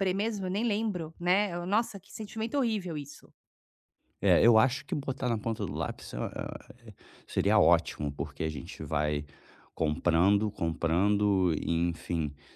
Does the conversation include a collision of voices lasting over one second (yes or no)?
no